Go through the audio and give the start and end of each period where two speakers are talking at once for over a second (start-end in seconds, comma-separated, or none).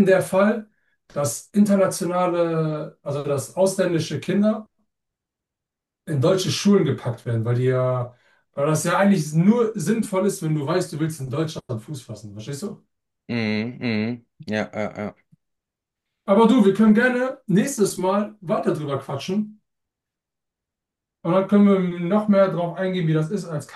none